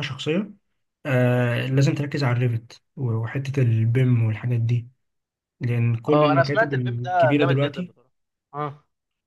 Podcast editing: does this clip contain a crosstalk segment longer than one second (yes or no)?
yes